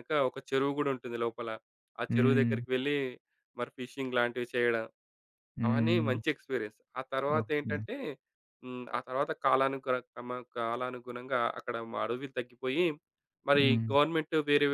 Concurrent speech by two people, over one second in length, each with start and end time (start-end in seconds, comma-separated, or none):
none